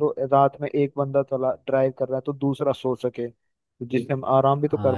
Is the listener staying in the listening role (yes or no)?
no